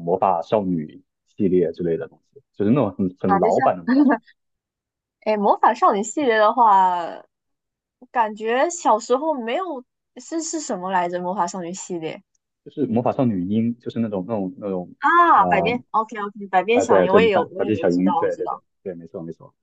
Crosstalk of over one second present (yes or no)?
yes